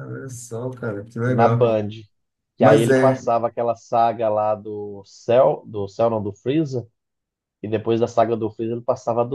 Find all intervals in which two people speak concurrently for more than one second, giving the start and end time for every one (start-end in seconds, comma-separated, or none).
none